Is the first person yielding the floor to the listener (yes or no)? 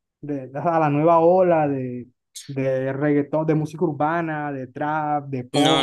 yes